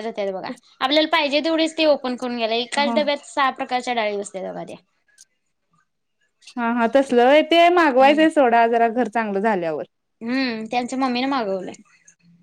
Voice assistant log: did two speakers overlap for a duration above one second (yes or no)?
no